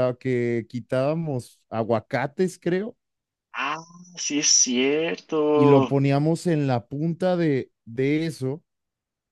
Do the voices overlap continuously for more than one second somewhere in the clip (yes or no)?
no